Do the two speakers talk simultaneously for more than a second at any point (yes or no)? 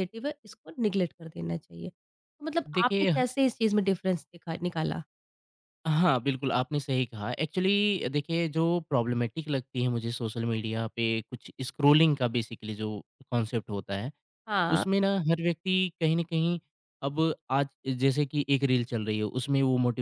no